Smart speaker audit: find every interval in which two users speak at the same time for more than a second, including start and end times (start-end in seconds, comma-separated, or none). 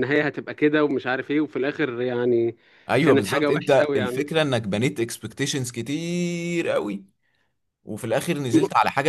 3.0-4.3